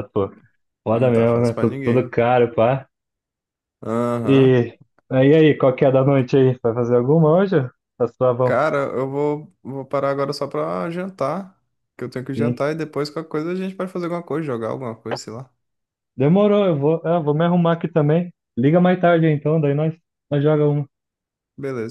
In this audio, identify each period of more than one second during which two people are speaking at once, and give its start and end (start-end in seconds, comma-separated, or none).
0.9-2.1